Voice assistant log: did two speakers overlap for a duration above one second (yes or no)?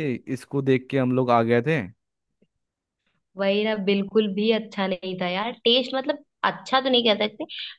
no